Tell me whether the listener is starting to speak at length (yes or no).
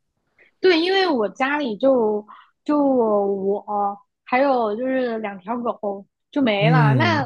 no